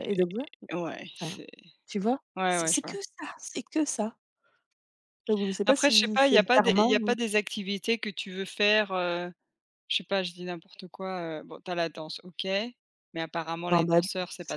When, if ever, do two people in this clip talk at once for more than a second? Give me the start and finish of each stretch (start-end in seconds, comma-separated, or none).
5.7-7.2